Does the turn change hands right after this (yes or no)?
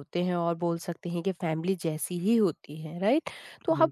no